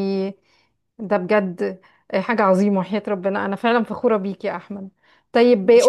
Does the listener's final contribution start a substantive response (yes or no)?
no